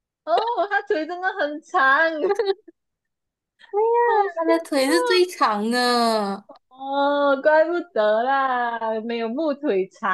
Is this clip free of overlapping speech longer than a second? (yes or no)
yes